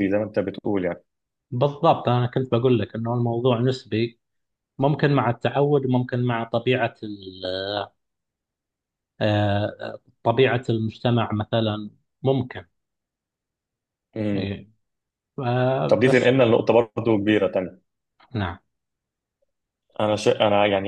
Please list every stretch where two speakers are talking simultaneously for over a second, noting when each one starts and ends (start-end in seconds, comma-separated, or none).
none